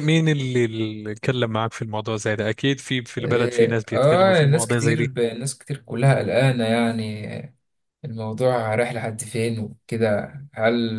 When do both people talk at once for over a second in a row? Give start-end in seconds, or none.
3.2-5.1